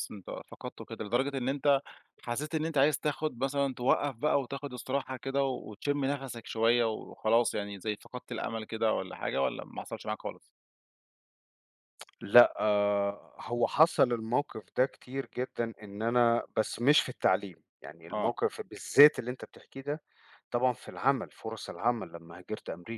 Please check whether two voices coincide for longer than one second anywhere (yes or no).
no